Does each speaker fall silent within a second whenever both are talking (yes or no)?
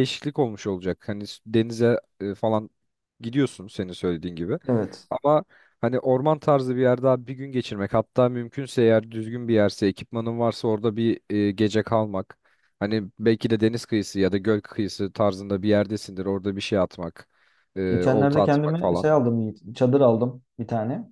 no